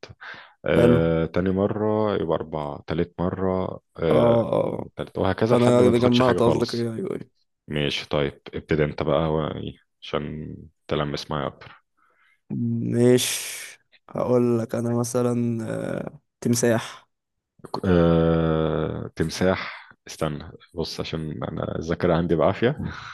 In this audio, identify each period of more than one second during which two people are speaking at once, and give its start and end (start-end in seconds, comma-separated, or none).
5.5-6.9